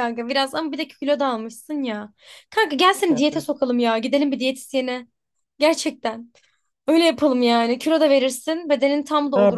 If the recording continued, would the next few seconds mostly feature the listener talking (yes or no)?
yes